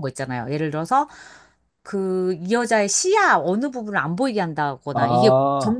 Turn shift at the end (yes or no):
no